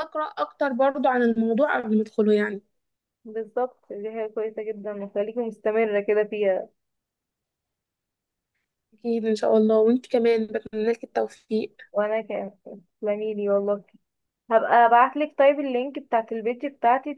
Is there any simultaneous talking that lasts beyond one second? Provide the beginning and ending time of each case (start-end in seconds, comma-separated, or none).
none